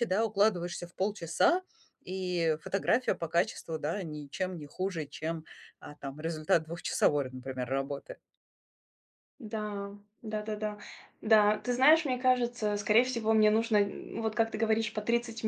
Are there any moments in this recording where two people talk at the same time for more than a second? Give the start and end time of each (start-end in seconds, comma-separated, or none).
none